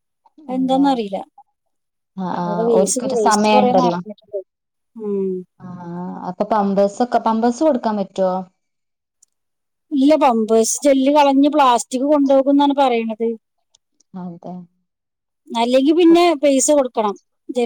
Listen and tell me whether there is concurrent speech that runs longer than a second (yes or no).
yes